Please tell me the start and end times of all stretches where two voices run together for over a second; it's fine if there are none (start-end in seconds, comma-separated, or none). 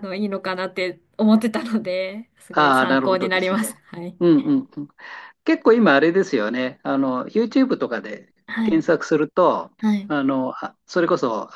2.5-3.7